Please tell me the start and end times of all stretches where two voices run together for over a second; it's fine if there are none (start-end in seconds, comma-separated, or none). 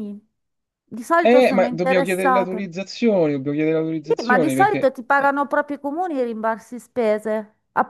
1.2-2.6, 4.0-5.3